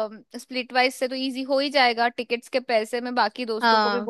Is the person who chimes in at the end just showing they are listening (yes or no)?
yes